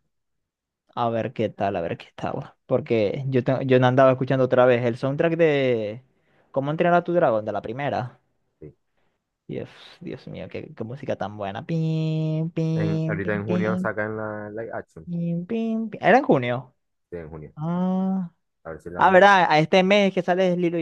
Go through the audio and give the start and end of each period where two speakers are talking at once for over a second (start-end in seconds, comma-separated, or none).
12.8-13.9